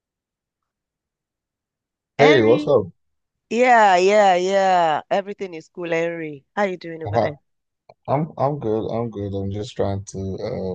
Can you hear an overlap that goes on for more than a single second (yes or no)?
no